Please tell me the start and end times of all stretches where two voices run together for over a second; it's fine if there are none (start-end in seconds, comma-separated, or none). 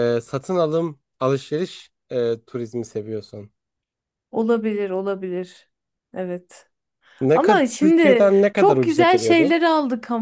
7.3-9.5